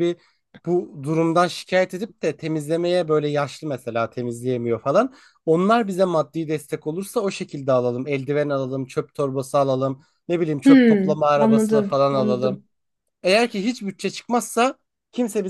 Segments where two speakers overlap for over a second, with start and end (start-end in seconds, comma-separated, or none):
10.6-12.6